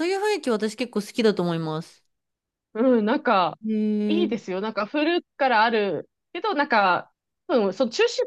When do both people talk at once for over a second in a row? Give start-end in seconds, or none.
none